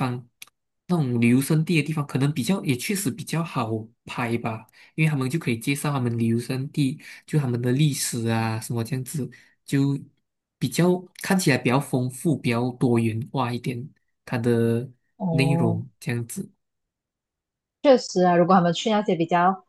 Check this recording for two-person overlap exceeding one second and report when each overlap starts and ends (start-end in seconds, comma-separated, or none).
none